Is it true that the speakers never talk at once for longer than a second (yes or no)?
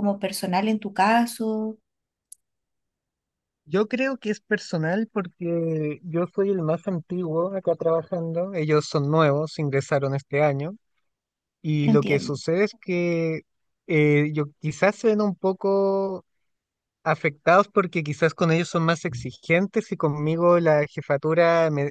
yes